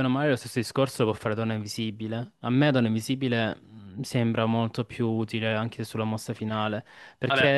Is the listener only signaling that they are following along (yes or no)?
yes